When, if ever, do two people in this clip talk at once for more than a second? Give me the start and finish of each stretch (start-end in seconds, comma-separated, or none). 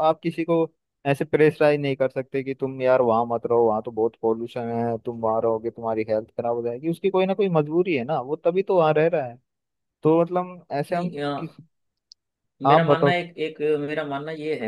none